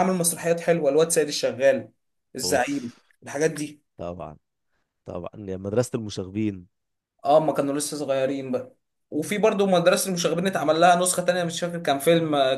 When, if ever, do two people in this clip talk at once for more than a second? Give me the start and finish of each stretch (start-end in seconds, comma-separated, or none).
none